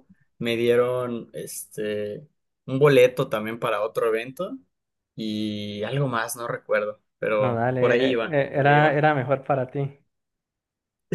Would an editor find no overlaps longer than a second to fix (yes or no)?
no